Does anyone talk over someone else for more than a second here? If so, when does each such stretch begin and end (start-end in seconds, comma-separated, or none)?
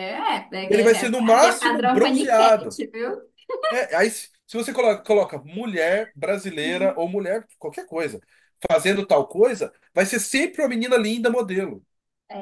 0.7-2.8